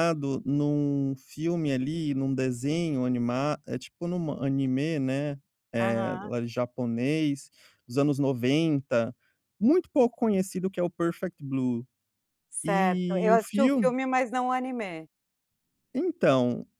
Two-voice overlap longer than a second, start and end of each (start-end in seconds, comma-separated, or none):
12.6-13.9